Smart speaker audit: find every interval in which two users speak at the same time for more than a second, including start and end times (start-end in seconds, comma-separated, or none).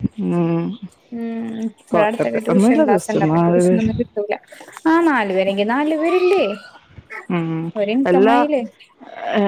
1.9-3.9